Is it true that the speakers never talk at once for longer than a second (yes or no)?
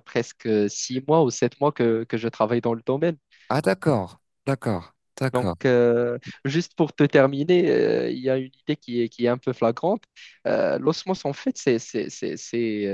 yes